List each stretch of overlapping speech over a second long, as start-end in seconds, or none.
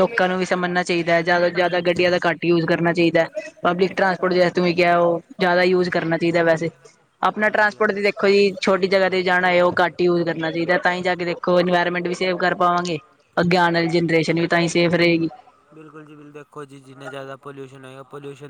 7.5-8.9